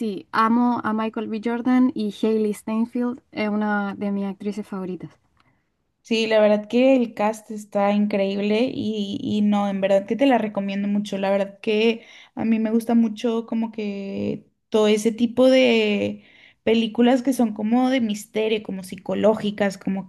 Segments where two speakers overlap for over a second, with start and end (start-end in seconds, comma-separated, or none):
none